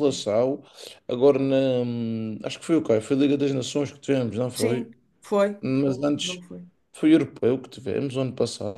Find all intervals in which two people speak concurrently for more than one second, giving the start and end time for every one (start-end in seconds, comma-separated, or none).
none